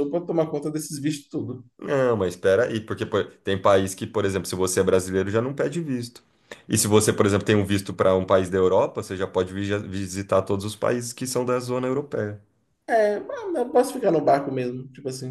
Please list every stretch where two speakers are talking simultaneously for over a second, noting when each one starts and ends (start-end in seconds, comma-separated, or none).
none